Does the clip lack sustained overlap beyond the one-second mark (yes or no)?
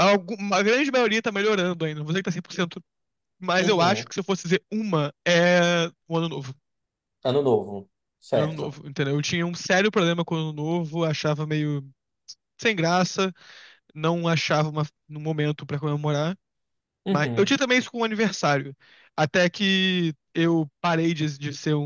yes